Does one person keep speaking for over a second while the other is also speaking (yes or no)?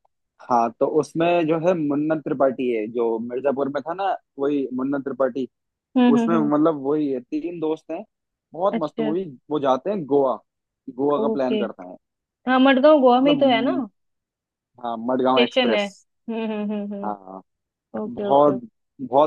no